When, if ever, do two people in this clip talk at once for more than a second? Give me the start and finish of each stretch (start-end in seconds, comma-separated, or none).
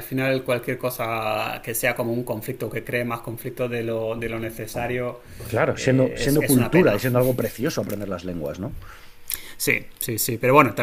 5.7-7.0